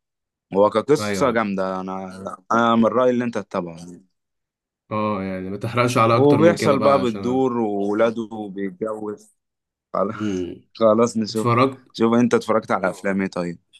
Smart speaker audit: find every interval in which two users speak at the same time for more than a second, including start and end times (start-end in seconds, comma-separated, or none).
6.1-7.4